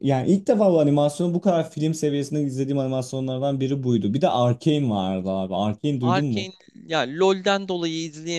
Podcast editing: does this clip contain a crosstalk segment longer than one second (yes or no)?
no